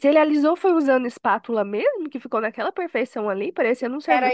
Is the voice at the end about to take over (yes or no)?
yes